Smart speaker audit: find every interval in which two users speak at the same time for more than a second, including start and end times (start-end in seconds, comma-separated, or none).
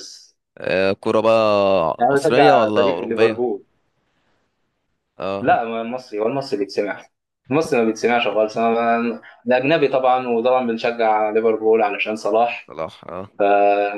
2.1-3.4